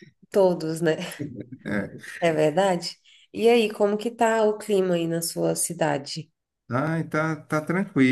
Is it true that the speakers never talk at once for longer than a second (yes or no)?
yes